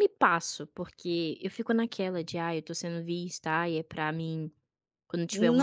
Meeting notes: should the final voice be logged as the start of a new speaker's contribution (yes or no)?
yes